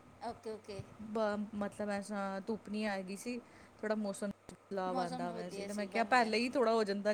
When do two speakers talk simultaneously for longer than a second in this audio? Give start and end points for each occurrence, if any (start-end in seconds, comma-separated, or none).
4.9-6.3